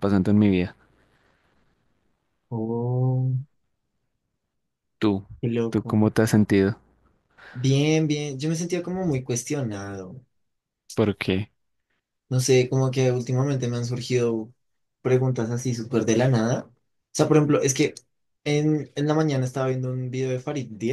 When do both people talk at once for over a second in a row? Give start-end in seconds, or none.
none